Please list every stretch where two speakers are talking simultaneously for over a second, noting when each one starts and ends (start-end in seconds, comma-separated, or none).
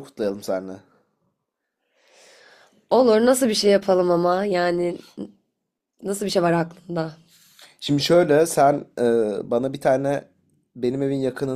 none